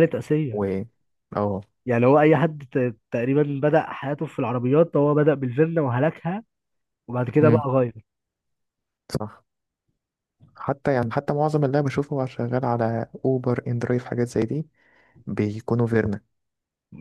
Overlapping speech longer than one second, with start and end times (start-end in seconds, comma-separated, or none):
none